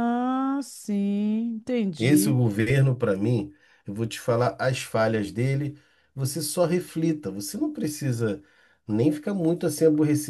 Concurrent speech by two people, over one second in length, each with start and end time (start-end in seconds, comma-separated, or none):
none